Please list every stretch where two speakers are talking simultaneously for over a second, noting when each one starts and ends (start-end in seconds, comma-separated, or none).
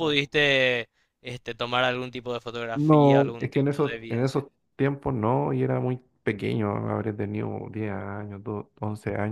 2.7-4.4